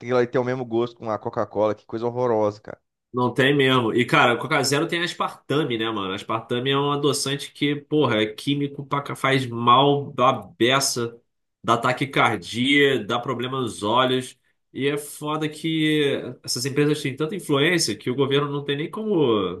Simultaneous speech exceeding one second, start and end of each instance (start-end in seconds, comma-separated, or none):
none